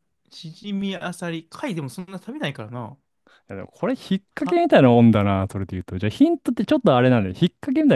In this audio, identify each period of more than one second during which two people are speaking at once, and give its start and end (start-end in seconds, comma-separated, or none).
none